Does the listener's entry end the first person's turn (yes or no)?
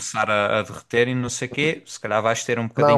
yes